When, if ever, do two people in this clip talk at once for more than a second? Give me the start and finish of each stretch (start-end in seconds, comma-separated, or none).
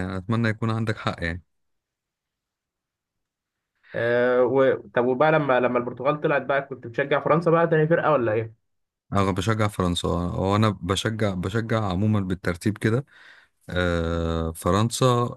none